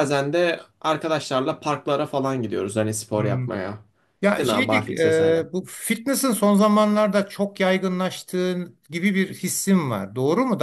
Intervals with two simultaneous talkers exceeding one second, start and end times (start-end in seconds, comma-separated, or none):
4.2-5.5